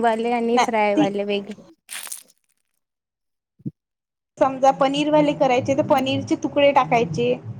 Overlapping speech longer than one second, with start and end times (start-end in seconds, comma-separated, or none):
none